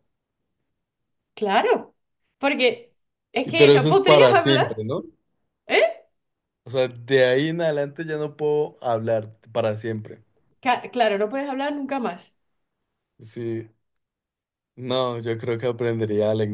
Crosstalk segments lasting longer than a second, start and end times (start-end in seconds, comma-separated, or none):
3.4-4.8